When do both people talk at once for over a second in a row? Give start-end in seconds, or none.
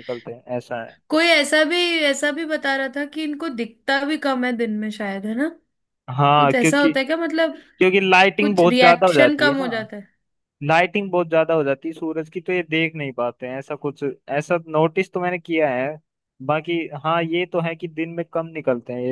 8.4-9.7